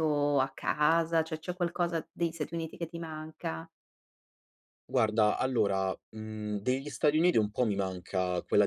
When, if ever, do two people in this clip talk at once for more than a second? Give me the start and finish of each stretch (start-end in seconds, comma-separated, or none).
none